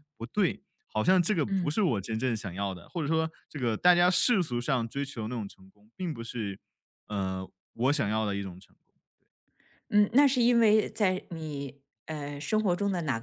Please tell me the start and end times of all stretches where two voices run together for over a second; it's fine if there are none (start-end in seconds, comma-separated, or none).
none